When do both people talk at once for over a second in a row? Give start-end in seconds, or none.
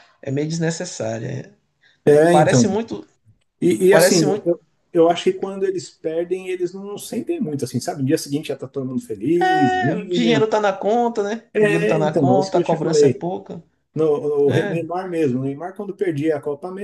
11.5-13.3